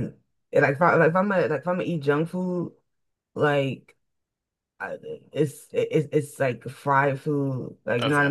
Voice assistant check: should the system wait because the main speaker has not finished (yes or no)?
yes